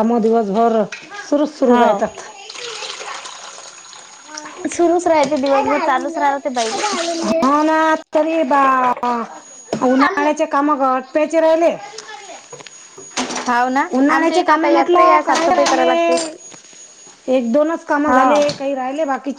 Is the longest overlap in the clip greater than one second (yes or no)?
yes